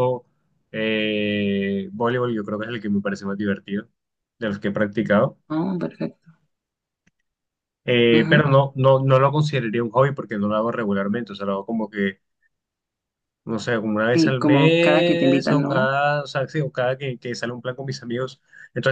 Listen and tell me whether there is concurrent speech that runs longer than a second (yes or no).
yes